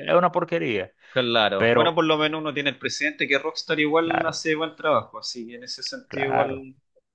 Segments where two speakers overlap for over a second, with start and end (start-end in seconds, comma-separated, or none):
none